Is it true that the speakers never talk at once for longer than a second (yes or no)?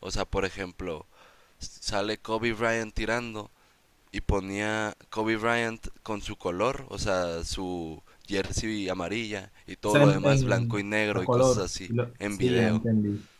no